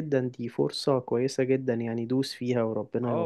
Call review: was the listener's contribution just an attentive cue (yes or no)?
no